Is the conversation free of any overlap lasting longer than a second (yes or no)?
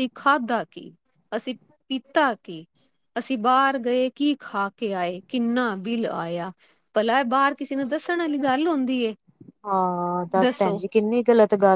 yes